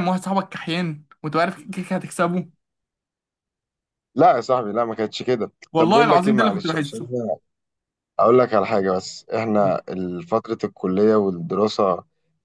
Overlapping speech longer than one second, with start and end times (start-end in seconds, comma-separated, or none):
5.7-7.1